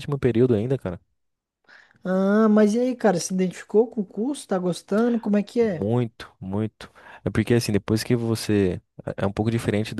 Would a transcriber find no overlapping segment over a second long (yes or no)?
yes